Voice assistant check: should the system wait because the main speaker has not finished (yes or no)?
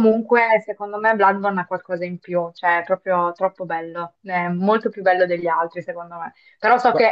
yes